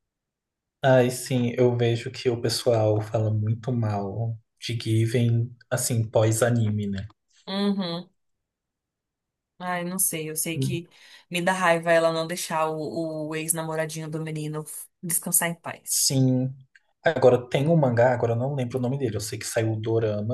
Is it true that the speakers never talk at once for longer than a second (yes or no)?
yes